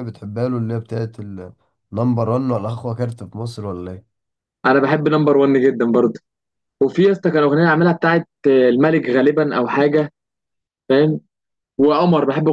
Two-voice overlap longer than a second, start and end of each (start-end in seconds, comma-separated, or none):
none